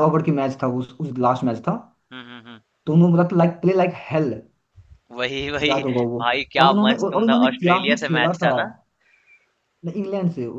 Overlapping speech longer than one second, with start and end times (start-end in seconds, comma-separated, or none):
6.6-8.5